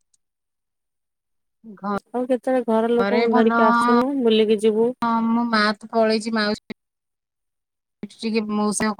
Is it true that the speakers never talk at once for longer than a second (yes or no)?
no